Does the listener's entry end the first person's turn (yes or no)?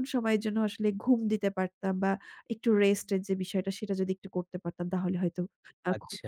yes